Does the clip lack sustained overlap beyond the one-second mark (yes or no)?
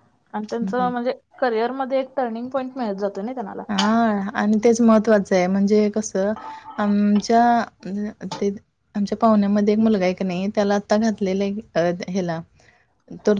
yes